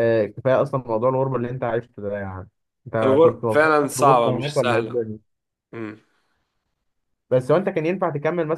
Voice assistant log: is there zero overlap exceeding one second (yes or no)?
no